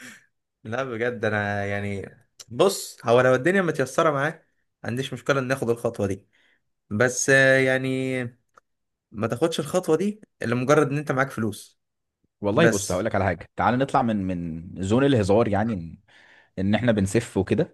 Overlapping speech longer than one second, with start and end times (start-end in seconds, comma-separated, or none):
none